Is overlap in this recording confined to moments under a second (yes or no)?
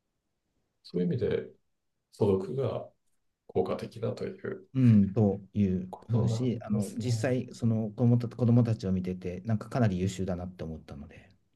no